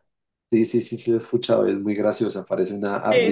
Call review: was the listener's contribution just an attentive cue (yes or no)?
no